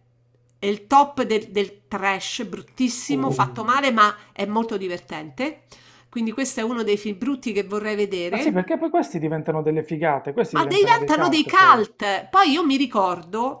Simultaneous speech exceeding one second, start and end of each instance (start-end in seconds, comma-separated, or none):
10.5-11.9